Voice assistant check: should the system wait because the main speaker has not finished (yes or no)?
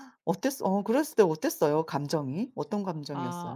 no